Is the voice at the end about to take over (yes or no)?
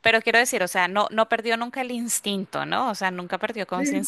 no